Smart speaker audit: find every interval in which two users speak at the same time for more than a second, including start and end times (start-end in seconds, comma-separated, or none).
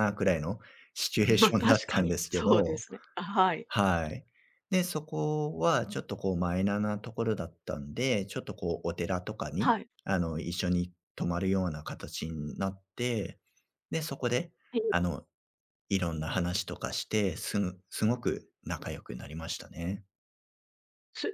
1.3-2.8